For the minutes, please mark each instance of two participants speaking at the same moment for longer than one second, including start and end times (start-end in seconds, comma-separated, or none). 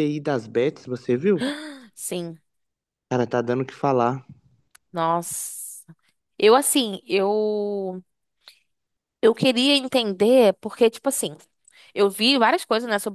none